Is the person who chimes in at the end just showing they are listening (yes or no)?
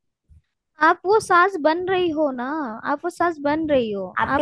no